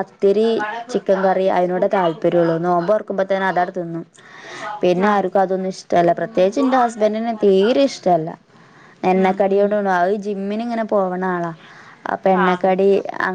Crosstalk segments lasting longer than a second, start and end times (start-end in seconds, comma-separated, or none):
0.9-2.6